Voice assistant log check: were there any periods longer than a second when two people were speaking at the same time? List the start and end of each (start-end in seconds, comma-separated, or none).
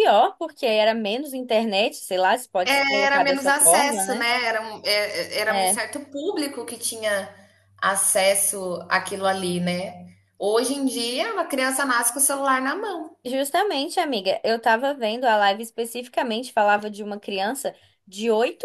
2.7-4.3